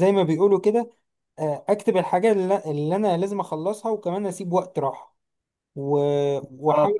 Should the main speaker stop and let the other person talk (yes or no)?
yes